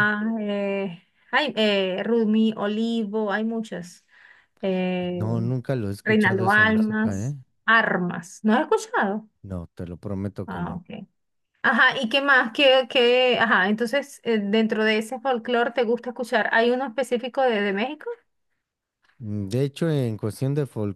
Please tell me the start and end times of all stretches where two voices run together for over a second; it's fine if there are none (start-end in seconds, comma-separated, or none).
6.0-7.3